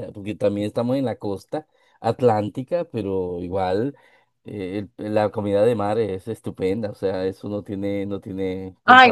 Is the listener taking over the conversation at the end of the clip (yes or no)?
yes